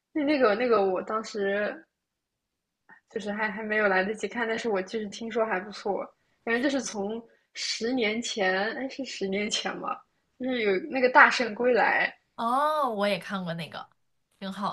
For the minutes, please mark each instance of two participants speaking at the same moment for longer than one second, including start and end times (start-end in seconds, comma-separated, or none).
none